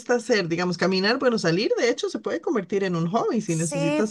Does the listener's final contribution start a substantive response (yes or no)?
yes